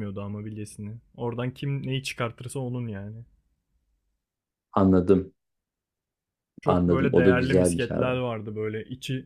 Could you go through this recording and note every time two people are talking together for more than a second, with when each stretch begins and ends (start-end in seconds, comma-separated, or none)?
6.6-8.1